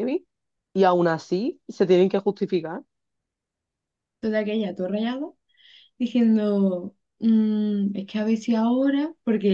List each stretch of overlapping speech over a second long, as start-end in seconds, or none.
none